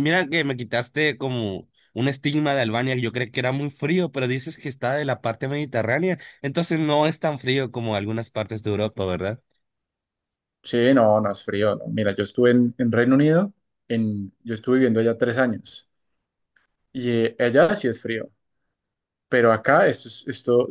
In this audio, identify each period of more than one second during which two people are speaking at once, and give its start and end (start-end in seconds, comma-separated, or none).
none